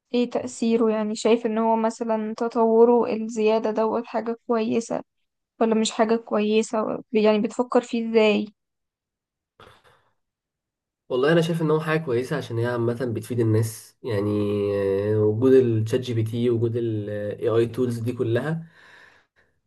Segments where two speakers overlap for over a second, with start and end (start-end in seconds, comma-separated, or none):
none